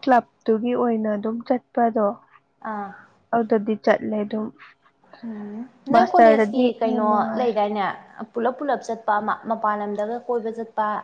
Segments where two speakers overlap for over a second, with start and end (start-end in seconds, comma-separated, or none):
5.9-7.5